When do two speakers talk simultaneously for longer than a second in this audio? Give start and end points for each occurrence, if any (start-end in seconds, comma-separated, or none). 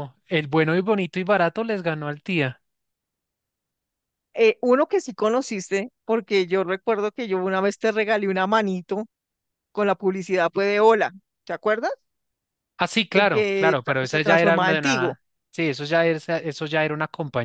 13.1-15.2